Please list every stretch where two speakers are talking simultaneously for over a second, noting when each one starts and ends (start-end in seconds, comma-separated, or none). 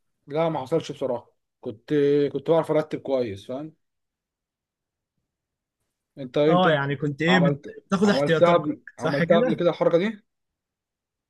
7.3-9.6